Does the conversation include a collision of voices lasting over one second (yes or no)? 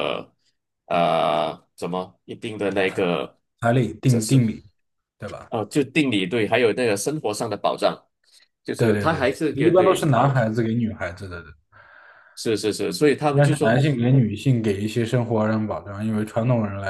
yes